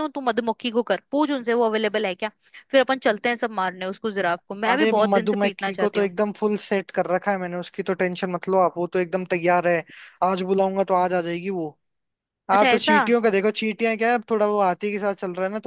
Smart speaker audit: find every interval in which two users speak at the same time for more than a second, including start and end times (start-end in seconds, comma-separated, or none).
4.7-6.1